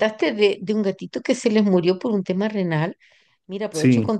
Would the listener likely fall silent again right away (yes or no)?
yes